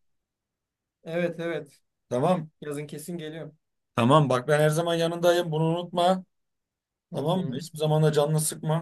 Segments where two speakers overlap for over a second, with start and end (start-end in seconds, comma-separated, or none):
none